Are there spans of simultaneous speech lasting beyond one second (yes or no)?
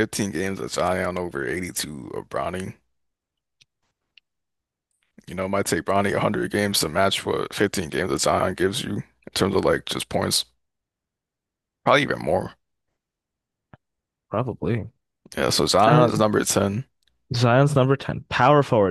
no